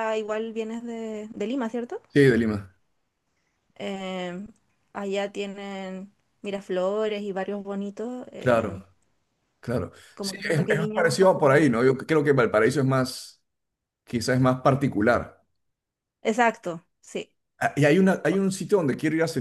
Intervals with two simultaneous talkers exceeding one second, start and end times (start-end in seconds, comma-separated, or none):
10.1-11.7